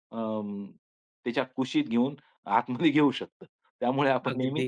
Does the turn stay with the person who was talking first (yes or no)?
yes